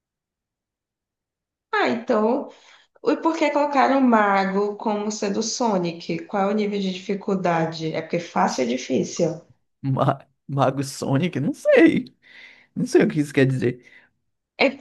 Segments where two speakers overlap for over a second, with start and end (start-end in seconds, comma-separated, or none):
none